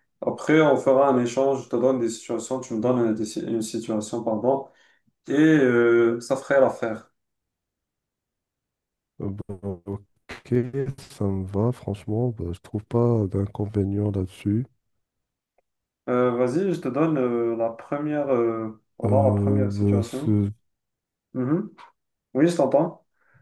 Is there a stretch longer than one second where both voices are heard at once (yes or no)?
yes